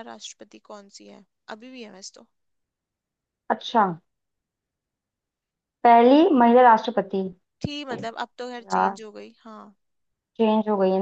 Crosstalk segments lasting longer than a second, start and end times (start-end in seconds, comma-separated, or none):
none